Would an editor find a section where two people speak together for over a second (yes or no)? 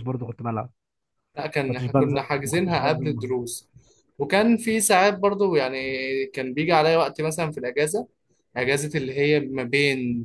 yes